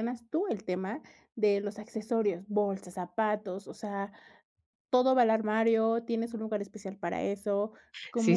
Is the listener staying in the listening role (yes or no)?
no